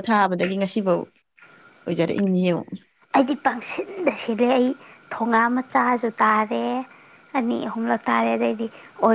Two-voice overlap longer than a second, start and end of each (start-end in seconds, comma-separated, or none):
none